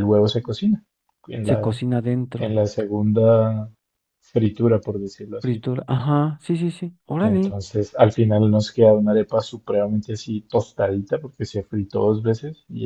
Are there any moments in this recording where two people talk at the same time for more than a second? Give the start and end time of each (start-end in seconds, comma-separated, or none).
none